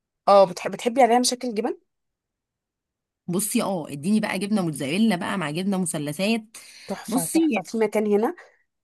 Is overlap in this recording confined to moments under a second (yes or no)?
yes